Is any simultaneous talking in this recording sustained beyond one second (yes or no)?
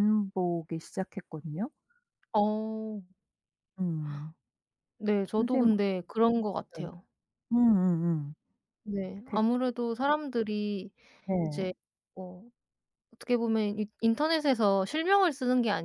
no